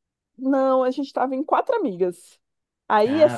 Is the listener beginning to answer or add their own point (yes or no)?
no